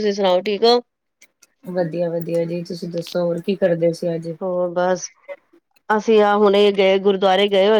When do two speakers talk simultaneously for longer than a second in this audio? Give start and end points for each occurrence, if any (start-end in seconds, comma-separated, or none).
none